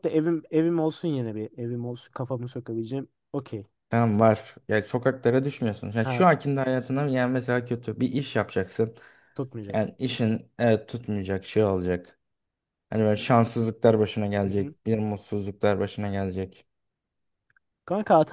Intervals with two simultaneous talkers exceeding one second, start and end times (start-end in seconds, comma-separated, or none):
none